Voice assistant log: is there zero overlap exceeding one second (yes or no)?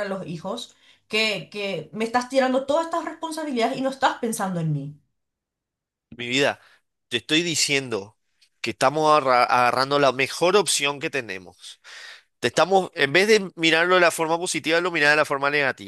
yes